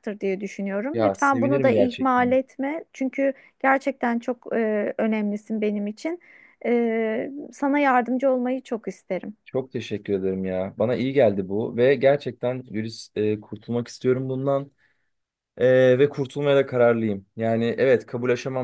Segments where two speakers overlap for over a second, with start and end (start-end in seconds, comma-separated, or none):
0.9-2.3